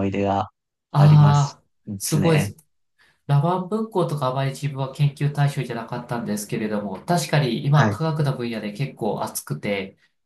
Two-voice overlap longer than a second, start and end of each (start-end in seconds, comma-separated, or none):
0.9-2.5